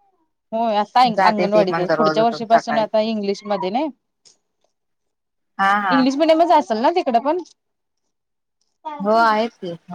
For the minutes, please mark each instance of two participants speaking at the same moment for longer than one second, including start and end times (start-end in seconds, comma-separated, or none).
1.2-2.9